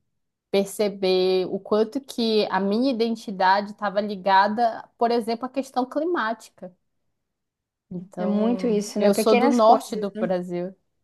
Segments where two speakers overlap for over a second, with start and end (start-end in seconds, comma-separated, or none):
8.2-10.3